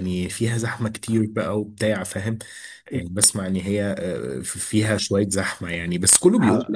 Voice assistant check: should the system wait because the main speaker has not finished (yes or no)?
yes